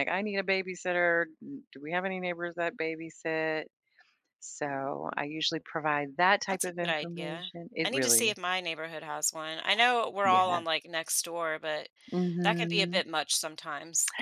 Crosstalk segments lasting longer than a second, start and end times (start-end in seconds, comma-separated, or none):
6.5-8.4